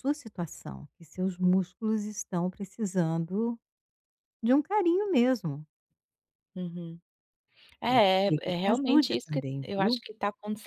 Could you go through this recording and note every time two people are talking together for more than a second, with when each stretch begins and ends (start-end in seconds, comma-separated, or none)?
7.8-10.0